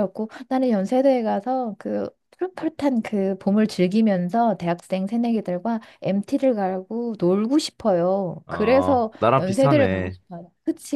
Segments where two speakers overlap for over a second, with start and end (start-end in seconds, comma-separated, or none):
8.5-10.2